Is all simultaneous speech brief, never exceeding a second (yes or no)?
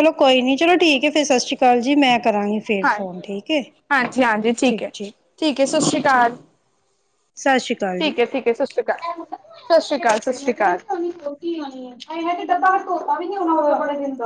yes